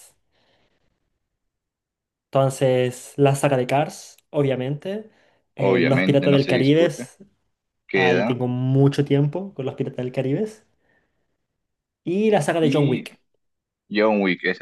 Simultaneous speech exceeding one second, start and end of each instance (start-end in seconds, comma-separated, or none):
5.6-6.9